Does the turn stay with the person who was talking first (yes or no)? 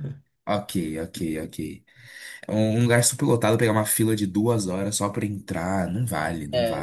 no